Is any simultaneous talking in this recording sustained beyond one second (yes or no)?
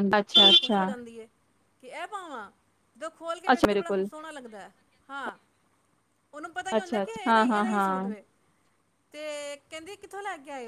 yes